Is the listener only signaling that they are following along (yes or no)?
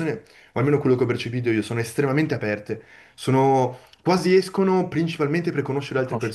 no